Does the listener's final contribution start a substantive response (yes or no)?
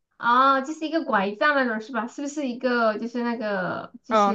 yes